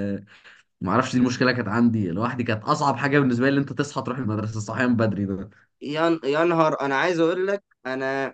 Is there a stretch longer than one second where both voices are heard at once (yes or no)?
no